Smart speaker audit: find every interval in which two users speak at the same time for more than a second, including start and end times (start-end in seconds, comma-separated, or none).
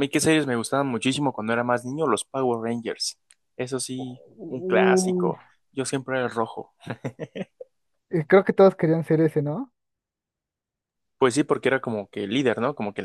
4.0-5.3